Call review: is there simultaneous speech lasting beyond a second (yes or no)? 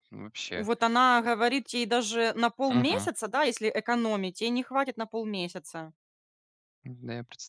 no